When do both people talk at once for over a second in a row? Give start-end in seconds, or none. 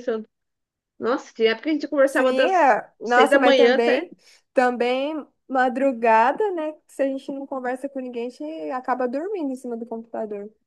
2.1-4.1